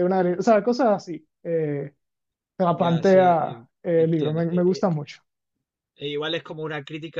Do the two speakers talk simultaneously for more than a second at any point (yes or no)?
yes